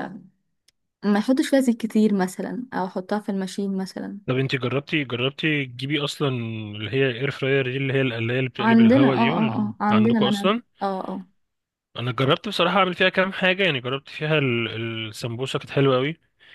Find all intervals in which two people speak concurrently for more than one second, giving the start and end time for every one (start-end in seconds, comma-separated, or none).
8.6-10.6